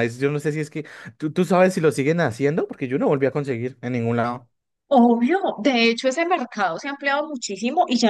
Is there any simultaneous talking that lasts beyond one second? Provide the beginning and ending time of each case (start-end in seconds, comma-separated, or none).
none